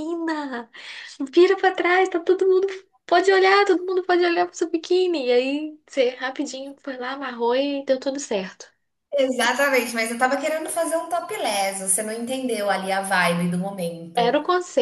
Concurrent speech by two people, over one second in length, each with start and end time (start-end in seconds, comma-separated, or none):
none